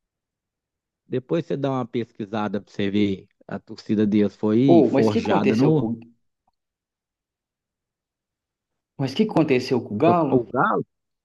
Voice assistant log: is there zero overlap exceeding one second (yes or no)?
no